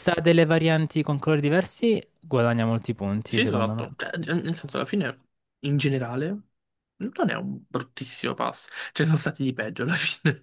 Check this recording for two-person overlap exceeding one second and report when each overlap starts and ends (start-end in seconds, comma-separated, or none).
none